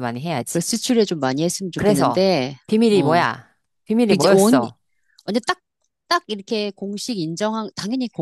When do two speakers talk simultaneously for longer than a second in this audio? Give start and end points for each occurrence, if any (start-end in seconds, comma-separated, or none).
none